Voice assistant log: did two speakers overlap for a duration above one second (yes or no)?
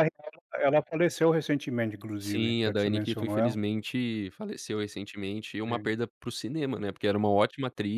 yes